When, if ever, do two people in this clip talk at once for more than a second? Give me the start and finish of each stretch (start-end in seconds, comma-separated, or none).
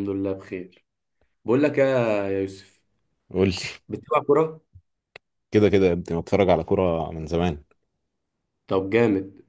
none